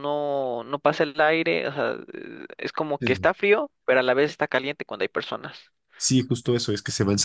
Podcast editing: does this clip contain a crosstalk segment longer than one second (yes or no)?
no